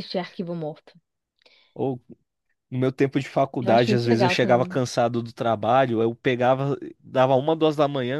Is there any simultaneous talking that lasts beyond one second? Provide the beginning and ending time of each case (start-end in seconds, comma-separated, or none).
3.6-4.8